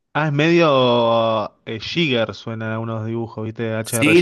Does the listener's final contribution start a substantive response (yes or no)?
yes